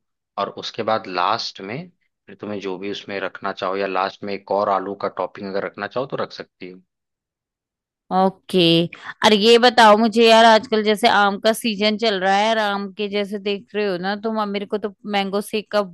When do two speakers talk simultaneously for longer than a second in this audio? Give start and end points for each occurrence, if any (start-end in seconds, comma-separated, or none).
none